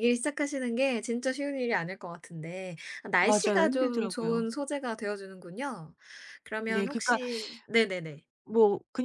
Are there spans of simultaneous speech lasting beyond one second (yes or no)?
yes